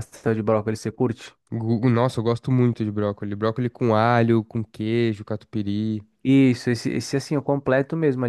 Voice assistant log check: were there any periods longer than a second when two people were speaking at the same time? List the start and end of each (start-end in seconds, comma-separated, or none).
none